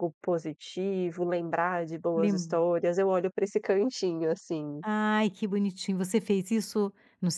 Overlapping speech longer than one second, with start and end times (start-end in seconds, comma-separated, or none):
none